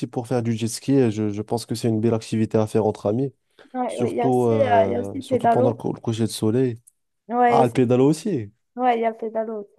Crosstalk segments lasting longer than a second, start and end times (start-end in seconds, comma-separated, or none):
3.9-5.8